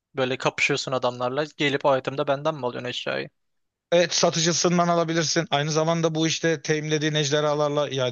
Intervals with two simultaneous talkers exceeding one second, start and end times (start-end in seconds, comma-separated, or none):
none